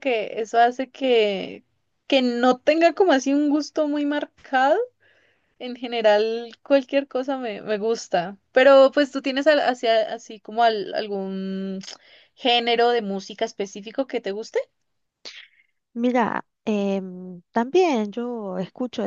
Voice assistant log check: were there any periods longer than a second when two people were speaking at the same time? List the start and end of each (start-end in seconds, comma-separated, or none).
none